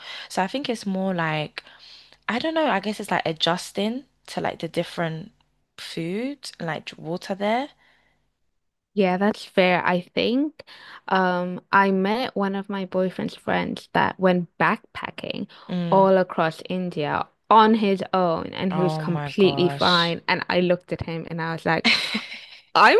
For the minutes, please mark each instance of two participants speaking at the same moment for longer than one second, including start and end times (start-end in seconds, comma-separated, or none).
18.7-20.1